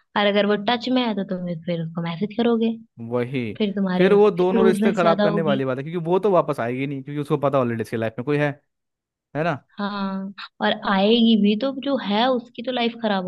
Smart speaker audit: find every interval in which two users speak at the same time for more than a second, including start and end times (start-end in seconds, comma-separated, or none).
4.0-5.6